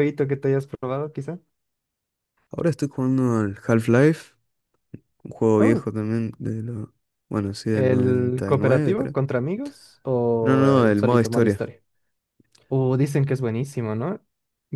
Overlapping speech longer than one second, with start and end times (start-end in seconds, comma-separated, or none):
7.7-9.2, 10.4-11.6